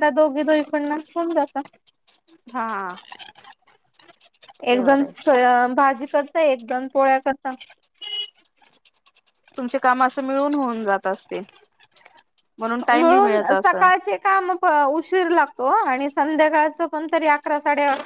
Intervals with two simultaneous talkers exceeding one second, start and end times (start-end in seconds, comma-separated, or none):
none